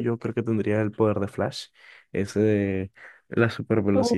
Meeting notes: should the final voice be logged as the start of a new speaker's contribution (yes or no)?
no